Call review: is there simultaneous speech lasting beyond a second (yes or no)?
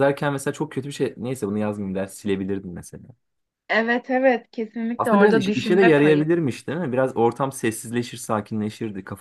yes